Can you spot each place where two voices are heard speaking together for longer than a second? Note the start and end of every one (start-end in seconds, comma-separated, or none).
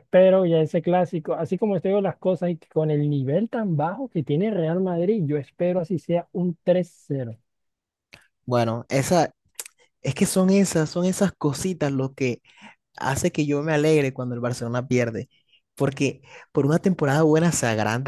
none